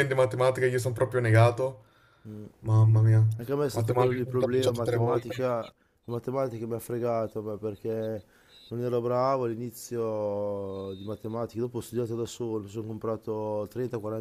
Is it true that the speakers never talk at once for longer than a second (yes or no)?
no